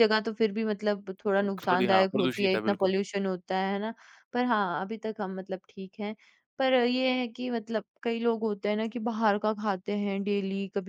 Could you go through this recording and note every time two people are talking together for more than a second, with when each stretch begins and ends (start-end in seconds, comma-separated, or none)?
1.4-2.9